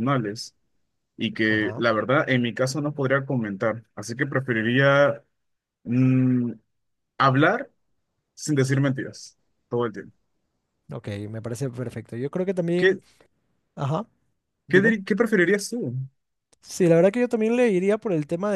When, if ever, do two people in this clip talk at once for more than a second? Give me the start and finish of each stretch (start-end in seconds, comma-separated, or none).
none